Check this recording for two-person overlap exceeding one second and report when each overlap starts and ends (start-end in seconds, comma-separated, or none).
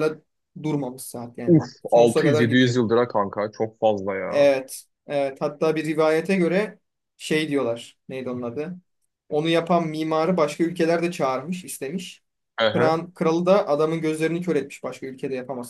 1.5-2.8